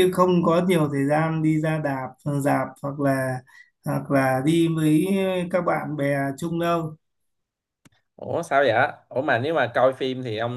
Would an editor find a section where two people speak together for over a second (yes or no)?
no